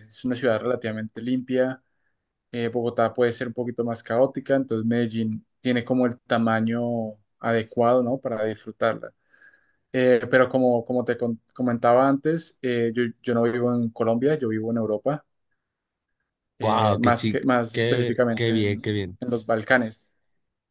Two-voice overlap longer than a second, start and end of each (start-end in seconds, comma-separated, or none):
16.6-18.8